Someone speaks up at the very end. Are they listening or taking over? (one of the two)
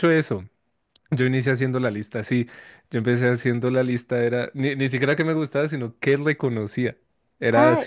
taking over